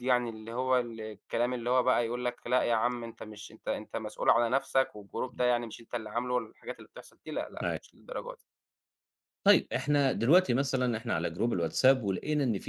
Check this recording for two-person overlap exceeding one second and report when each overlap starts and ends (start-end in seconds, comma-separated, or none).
none